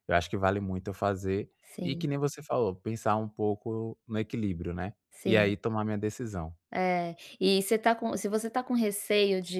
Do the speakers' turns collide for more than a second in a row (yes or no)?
no